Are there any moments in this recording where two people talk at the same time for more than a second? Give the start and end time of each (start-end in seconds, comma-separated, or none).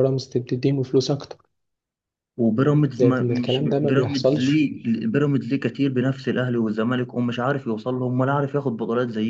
2.9-4.6